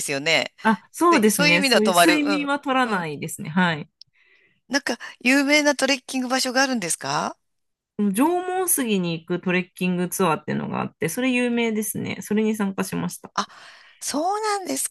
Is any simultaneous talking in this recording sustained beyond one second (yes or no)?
yes